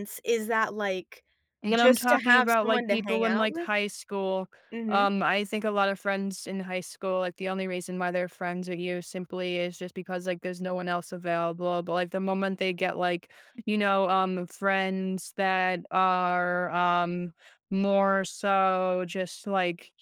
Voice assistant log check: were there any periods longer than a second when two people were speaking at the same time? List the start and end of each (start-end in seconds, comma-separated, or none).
1.7-3.7